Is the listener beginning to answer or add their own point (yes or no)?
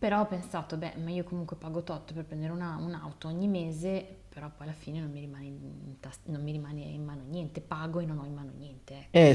yes